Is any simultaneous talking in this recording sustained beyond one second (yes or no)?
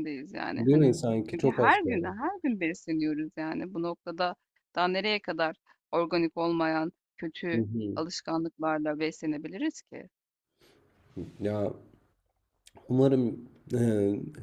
yes